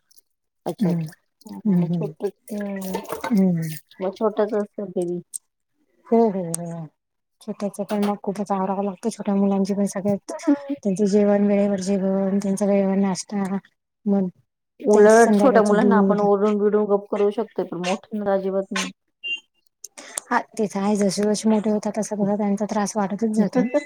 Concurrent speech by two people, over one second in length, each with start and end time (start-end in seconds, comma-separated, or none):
14.9-16.2